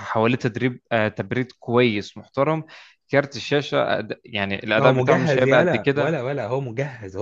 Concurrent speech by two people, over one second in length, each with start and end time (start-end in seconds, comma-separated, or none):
4.7-6.2